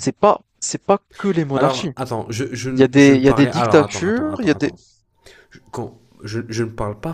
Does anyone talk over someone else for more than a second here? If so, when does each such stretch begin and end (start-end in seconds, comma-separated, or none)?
2.8-4.7